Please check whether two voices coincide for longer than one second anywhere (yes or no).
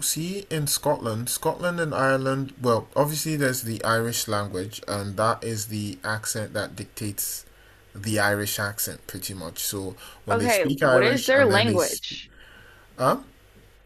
yes